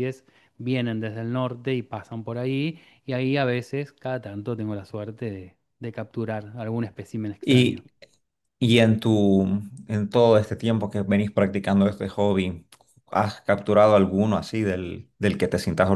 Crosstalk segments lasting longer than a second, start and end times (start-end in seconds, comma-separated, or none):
none